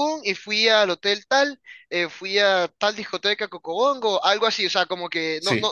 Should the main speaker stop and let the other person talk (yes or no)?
no